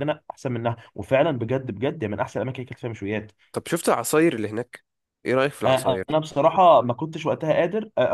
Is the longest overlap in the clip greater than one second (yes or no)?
no